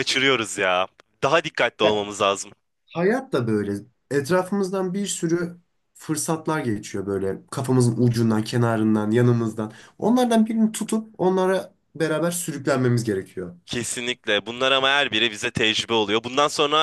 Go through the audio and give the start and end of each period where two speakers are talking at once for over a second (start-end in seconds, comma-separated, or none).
none